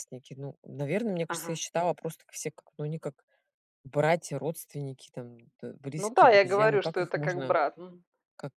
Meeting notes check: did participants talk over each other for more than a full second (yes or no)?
yes